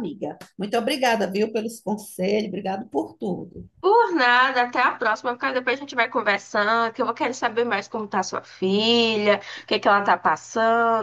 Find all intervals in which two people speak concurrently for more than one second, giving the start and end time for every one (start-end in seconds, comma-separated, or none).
none